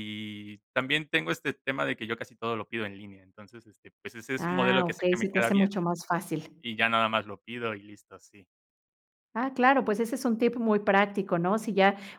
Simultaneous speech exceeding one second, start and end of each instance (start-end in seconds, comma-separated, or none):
4.4-5.7